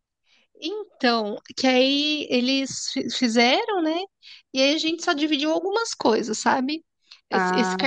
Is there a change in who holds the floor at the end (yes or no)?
no